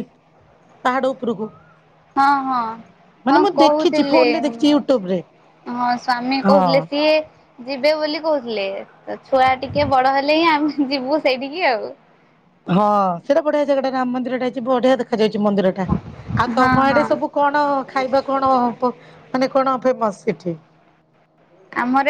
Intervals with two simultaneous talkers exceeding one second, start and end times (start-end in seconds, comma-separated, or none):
3.3-5.0